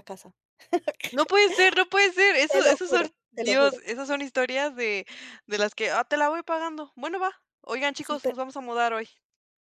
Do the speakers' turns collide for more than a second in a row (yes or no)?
yes